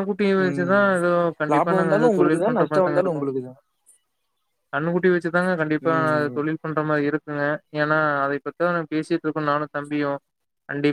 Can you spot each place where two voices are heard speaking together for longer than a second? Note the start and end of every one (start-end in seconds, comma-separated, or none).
1.5-3.2